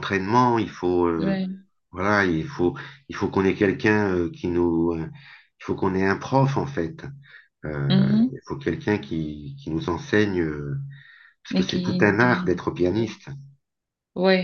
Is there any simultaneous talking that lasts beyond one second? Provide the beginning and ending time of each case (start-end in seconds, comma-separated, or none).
11.5-13.1